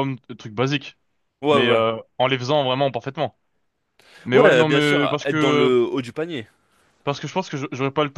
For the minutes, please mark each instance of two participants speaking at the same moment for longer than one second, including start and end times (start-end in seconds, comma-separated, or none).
4.3-5.7